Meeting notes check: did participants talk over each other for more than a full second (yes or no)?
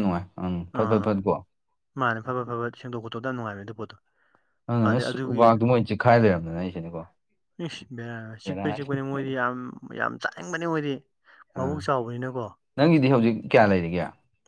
no